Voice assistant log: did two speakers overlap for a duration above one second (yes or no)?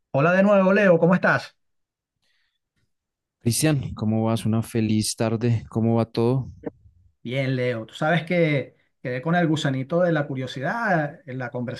no